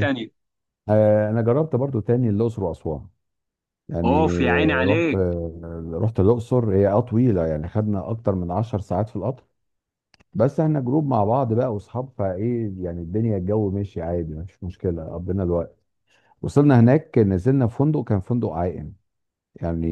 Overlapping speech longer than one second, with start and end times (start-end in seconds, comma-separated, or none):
4.0-5.2